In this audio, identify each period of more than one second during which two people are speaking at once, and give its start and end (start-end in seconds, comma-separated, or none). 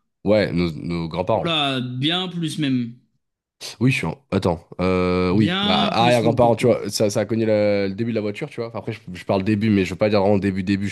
5.3-6.7